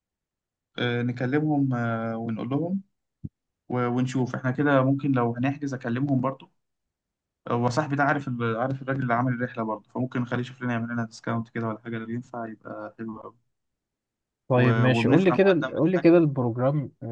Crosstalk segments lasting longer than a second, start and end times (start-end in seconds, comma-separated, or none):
14.5-16.1